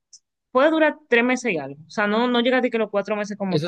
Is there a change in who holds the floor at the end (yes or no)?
yes